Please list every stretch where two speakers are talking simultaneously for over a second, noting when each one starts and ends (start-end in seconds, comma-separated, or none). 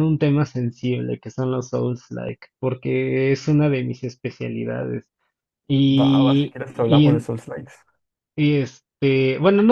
6.0-7.3